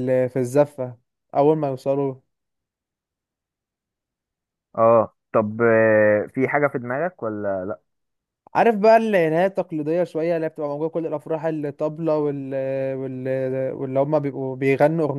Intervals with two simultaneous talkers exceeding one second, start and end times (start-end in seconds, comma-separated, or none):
none